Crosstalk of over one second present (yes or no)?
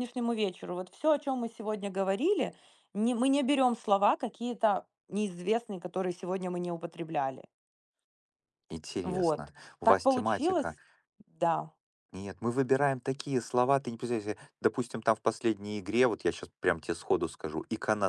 yes